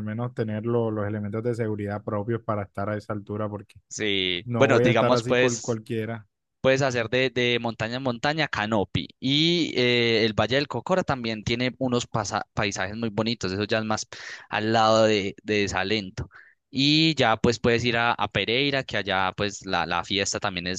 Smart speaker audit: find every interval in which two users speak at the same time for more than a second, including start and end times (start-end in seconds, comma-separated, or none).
4.4-5.8